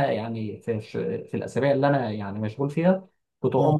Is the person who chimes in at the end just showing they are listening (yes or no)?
yes